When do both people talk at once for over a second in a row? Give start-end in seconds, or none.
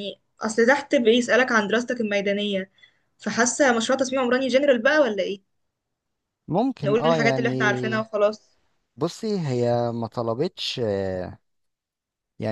6.8-8.1